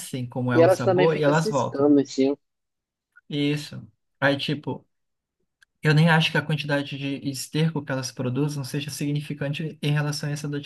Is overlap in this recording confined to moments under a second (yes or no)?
no